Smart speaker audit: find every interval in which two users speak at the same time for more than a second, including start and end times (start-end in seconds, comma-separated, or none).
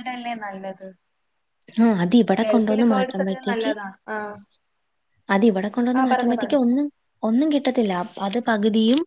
2.4-3.7